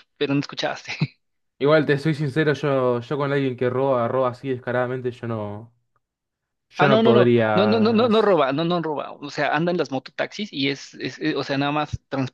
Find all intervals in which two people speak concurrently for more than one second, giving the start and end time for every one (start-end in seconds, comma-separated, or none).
6.8-8.1